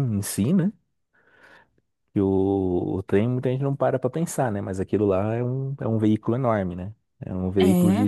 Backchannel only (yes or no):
yes